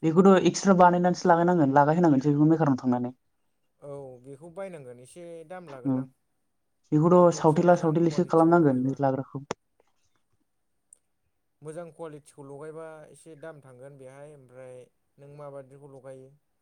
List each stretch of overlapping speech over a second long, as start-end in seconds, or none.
7.2-8.9